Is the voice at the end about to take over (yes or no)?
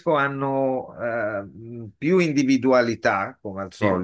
no